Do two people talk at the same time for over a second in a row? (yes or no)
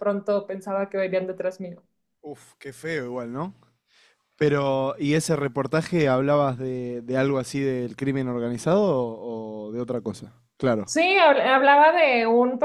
no